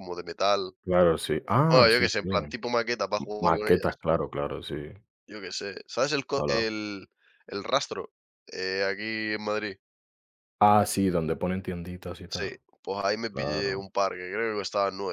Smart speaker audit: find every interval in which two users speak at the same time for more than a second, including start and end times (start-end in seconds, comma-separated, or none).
none